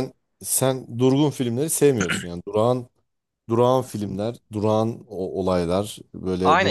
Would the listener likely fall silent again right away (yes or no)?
no